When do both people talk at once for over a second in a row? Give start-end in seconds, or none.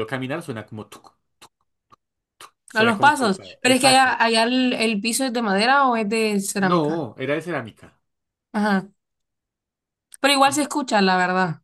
2.7-4.2